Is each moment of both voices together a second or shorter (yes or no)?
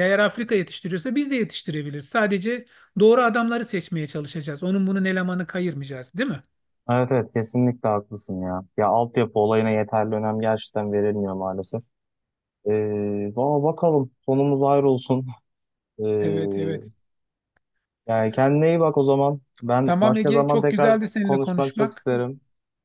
no